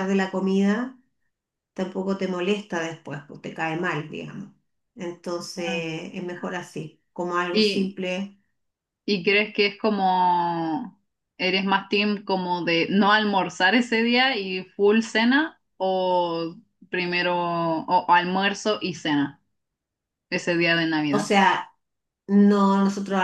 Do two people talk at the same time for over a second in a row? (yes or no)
no